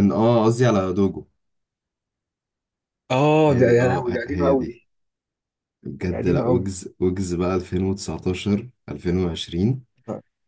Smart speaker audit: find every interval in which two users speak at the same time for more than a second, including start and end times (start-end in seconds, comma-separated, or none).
3.5-4.8